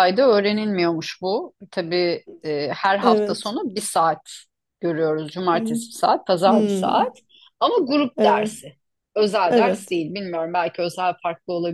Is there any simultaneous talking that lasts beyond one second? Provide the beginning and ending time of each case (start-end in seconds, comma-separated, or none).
none